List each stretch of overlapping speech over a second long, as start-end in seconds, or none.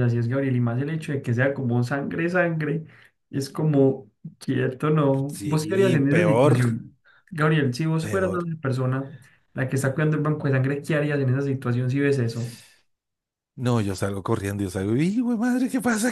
5.3-6.6